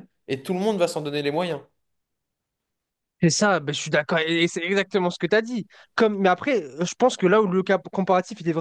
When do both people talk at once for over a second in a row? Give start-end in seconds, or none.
none